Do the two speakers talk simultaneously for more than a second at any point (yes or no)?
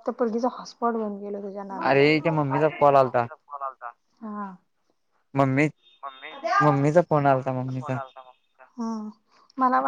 no